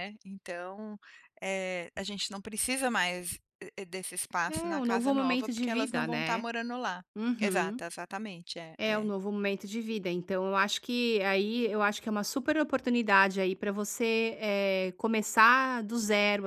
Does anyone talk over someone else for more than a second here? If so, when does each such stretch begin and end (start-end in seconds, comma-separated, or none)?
4.5-6.5